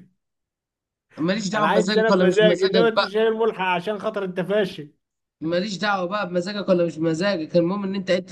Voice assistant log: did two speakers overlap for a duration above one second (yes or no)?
yes